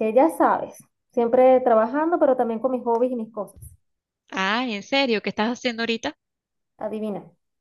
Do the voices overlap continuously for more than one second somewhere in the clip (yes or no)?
no